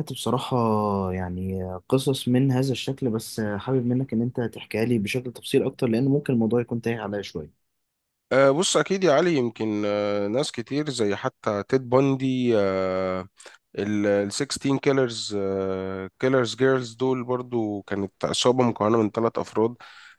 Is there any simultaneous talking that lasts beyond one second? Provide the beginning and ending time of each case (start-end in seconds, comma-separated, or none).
none